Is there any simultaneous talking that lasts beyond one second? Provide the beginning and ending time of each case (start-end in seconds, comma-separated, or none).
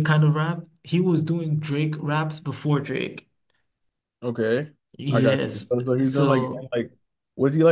5.1-6.7